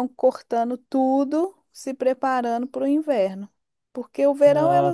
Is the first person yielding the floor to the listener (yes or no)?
no